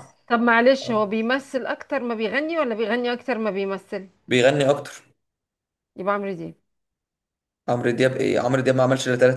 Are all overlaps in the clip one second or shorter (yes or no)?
yes